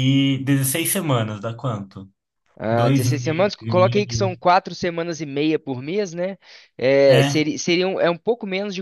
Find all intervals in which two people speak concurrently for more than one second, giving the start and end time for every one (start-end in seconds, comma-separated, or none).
2.7-4.4